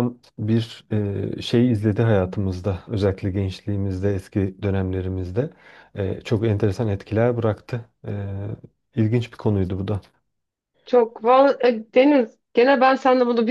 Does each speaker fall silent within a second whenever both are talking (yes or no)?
yes